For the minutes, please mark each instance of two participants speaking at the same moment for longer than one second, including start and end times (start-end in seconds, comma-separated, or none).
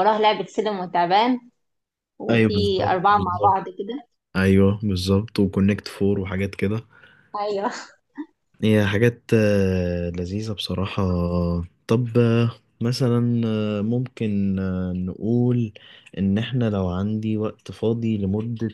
2.3-3.6